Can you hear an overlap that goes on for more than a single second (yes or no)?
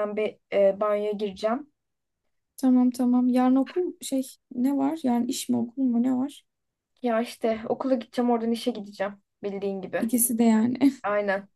no